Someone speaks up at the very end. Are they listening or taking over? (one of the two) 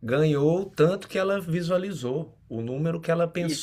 listening